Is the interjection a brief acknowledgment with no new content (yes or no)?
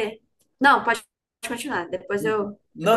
no